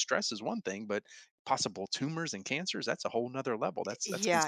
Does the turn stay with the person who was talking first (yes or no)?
no